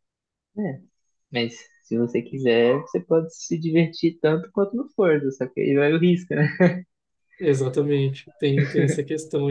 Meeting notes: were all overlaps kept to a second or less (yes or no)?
yes